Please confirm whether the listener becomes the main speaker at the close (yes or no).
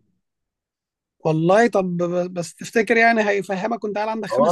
yes